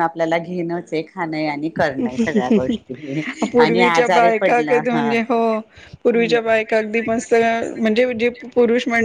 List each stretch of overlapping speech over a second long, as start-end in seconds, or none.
3.6-5.1